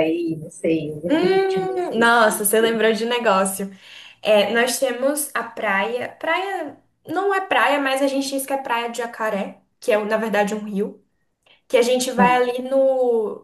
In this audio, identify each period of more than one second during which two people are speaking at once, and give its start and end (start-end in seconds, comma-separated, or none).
1.1-2.8